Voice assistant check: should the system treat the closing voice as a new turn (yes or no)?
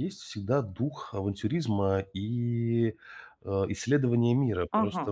yes